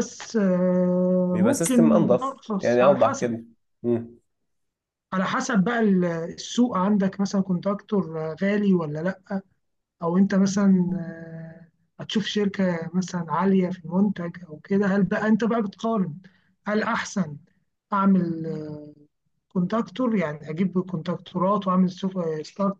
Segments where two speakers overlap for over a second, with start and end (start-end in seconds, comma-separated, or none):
1.3-3.3